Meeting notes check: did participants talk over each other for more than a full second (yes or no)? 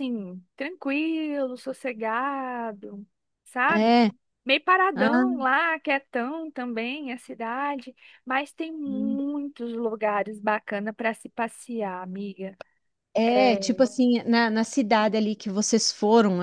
no